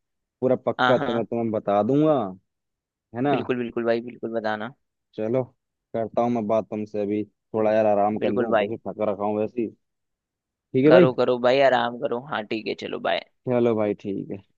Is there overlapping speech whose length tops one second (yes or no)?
no